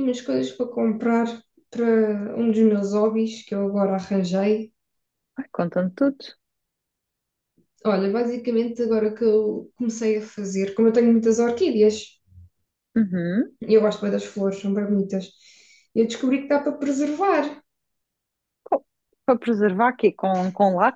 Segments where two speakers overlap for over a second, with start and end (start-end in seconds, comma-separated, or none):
none